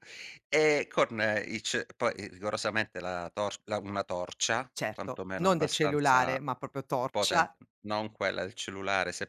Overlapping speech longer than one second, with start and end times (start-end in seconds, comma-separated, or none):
4.7-6.4